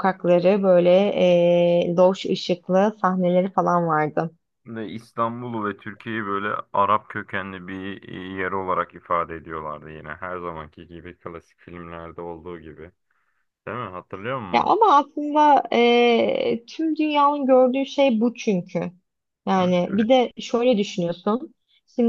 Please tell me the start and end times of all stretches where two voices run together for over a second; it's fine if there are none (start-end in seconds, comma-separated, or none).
none